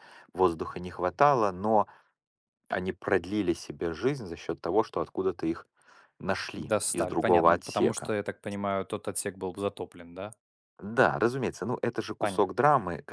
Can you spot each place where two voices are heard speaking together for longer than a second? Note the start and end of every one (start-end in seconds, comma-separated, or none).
6.6-8.1